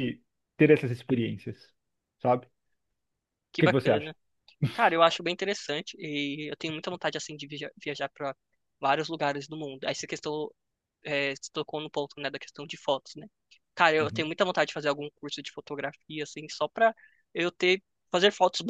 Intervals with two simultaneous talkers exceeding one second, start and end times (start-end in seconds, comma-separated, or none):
none